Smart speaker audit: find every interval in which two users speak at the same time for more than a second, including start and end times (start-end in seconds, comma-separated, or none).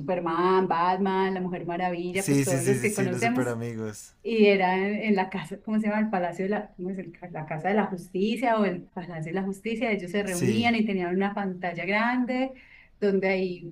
2.1-3.5